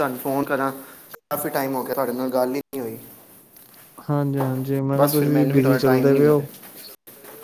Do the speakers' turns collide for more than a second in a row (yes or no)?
yes